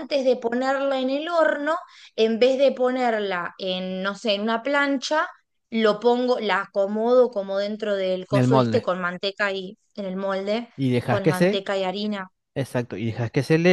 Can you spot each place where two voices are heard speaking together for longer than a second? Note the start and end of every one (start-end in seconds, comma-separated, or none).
none